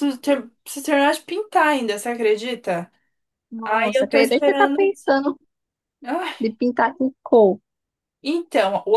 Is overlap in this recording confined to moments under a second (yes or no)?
no